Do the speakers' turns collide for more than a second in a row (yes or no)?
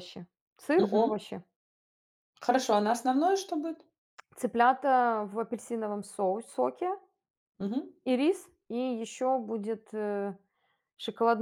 no